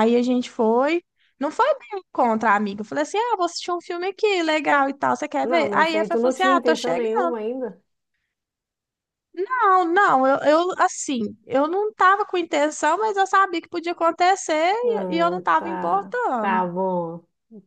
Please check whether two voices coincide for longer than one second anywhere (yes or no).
yes